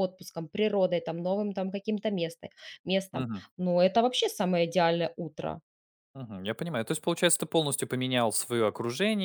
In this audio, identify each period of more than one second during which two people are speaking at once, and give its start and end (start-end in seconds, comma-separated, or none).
none